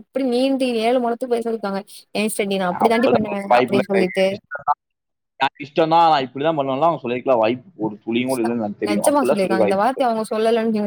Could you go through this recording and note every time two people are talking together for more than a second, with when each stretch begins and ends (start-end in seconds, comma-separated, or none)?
2.9-4.2